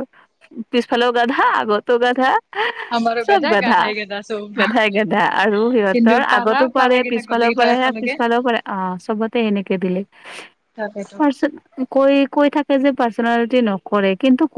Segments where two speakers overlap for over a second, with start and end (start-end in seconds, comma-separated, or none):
5.9-8.1